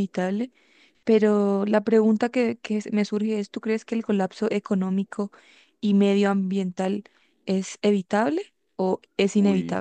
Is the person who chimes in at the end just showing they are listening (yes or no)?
no